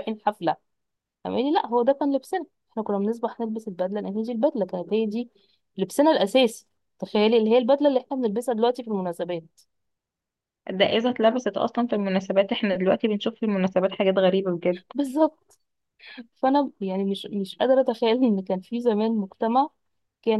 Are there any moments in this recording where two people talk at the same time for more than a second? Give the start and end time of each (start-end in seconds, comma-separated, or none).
none